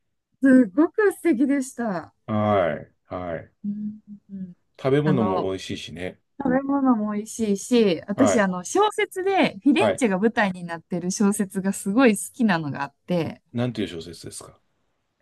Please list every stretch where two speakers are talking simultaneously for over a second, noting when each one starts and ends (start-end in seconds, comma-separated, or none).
none